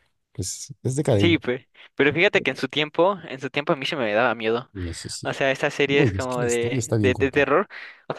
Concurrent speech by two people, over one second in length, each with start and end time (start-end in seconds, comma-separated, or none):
5.9-7.6